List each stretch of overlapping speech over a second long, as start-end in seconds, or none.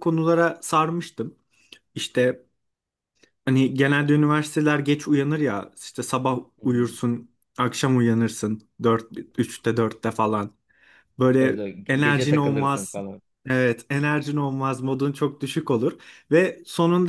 11.4-13.0